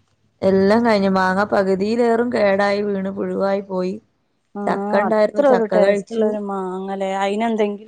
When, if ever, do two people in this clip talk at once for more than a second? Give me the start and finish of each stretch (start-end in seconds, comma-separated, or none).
4.7-6.2